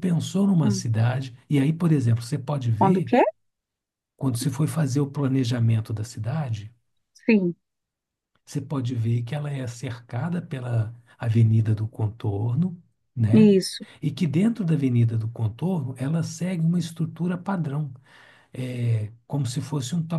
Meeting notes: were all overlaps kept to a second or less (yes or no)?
yes